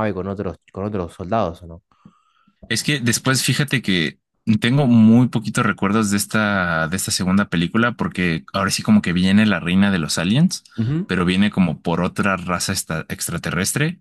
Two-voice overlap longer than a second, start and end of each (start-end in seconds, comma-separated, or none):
none